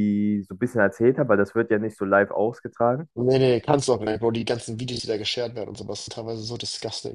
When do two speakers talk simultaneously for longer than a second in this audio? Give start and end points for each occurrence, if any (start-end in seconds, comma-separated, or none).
none